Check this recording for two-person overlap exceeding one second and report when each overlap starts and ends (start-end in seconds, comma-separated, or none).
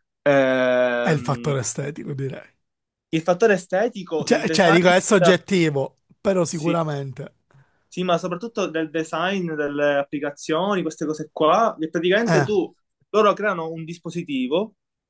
none